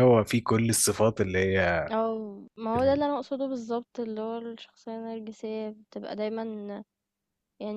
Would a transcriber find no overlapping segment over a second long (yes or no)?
yes